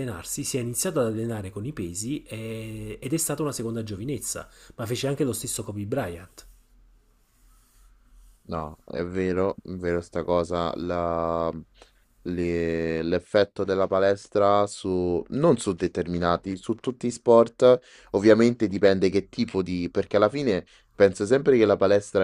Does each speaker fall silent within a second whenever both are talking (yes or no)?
yes